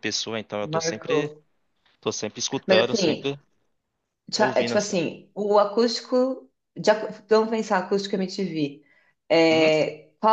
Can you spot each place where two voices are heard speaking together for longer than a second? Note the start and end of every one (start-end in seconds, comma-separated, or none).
none